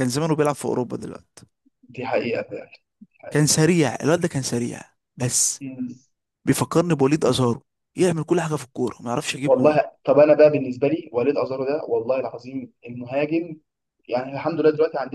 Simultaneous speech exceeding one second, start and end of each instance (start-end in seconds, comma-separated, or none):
none